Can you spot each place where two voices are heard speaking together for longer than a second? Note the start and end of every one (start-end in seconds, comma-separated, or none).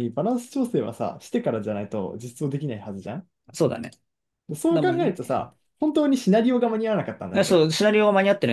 none